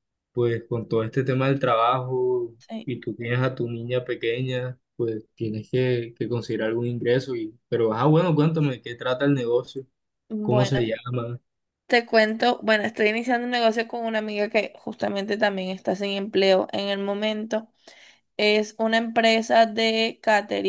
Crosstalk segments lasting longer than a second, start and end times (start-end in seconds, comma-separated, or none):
none